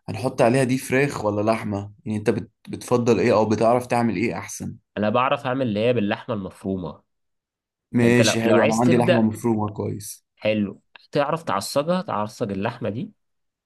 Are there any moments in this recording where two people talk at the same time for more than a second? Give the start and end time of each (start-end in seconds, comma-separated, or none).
8.0-9.3